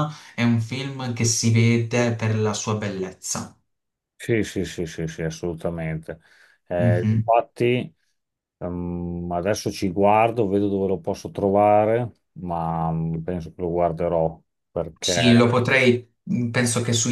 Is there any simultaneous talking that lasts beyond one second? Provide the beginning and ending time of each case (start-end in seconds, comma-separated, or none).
none